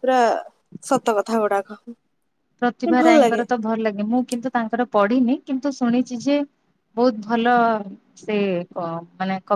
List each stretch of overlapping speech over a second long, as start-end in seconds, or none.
none